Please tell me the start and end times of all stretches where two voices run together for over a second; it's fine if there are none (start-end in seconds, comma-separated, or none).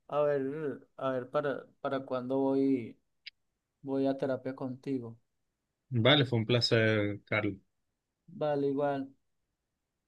none